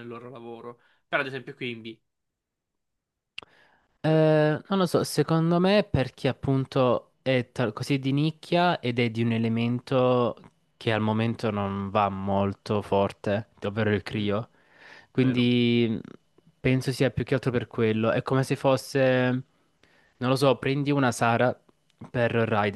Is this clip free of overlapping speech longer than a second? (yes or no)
yes